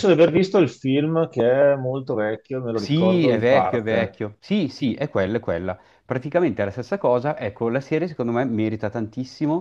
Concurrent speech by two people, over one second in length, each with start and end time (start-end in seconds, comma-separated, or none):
2.7-4.2